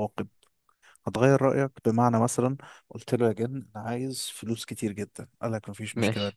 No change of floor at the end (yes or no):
yes